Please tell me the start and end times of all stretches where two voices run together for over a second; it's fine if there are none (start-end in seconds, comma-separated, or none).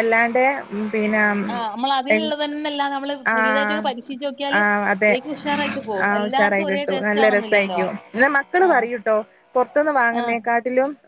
6.1-7.8